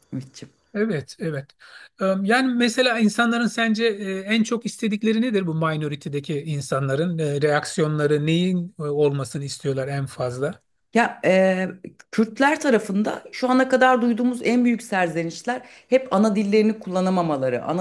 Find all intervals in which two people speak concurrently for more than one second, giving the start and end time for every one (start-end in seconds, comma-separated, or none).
none